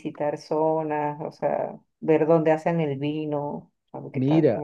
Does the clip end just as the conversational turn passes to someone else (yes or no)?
yes